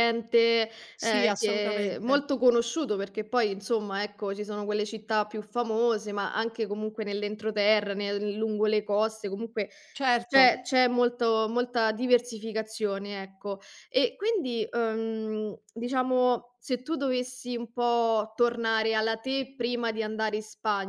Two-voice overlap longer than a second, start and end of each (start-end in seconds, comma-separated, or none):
0.9-2.2